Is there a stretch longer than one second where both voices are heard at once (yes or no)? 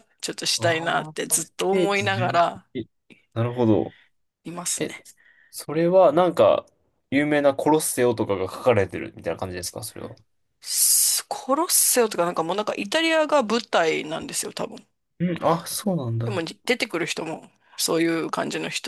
yes